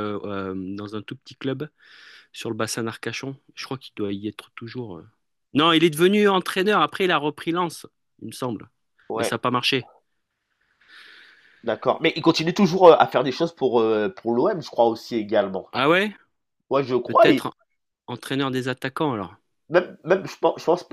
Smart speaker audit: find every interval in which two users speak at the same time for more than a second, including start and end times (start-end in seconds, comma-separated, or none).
none